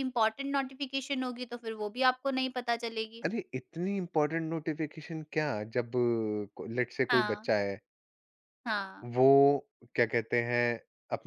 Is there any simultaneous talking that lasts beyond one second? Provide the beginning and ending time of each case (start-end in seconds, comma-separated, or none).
none